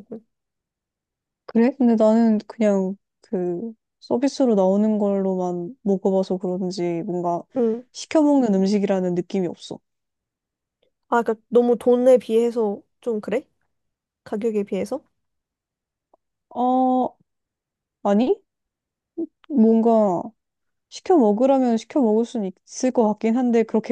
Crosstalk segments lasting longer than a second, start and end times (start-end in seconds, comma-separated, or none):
none